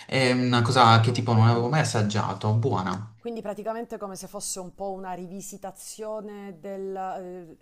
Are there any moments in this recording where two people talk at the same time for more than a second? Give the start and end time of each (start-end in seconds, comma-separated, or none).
none